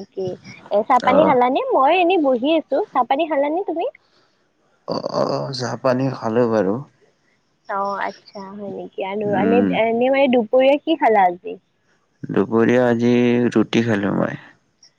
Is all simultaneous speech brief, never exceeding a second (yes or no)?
yes